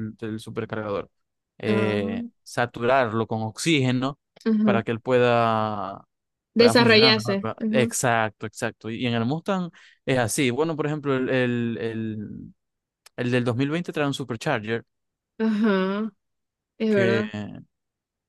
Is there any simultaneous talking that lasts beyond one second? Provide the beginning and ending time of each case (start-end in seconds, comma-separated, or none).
6.5-7.9